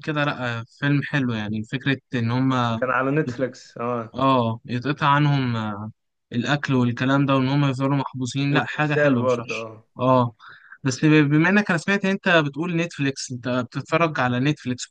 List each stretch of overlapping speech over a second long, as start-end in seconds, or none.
8.5-9.8